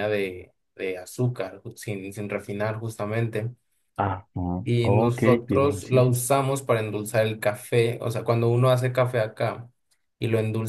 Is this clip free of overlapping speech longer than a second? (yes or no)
no